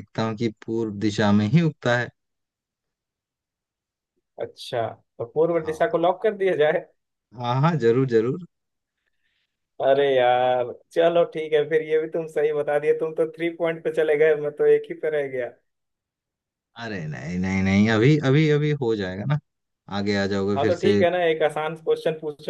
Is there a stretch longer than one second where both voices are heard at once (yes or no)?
no